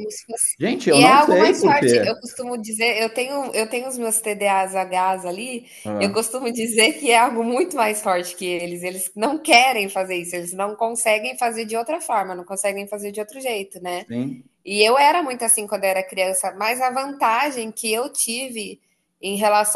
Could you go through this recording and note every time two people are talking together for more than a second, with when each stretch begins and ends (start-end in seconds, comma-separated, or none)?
0.6-2.2